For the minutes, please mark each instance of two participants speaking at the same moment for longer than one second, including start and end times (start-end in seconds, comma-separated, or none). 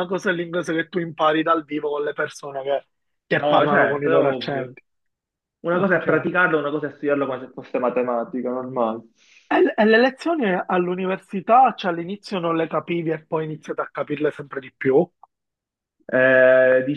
3.3-4.8